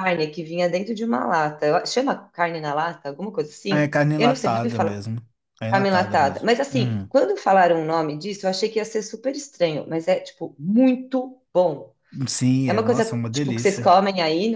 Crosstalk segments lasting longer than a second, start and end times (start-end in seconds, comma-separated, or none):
3.7-5.0, 5.7-7.1, 12.7-14.0